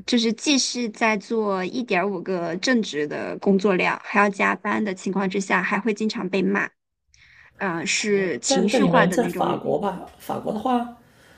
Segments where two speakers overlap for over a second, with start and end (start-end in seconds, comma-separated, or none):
8.1-9.5